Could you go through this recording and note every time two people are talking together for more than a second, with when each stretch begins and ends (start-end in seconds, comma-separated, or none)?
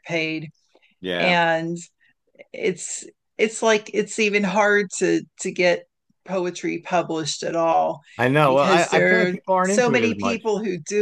8.4-10.4